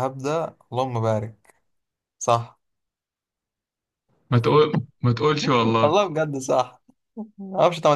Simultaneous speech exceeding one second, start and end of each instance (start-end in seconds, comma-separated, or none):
none